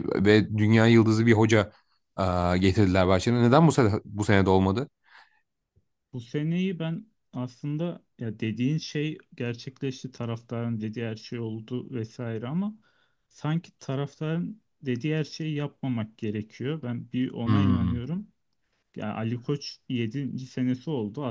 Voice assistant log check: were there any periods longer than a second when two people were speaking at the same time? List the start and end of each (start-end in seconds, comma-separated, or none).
none